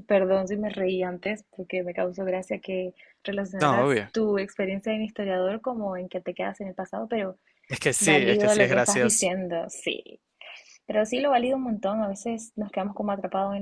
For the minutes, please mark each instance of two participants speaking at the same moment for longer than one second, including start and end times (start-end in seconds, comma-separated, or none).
8.0-9.3